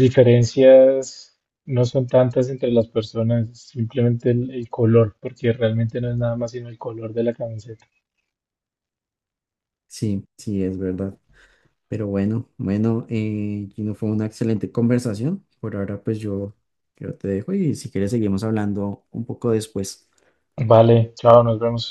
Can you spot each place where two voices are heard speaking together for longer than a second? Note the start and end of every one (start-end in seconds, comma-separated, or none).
none